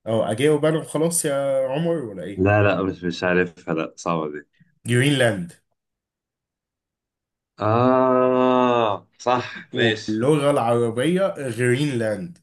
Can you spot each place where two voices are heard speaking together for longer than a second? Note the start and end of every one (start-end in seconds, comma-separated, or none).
none